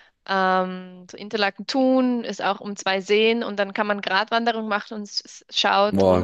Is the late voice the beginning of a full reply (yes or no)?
no